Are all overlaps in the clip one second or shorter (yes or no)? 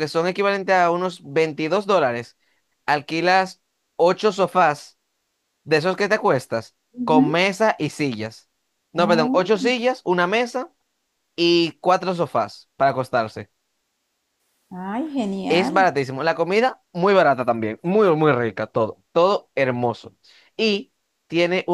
yes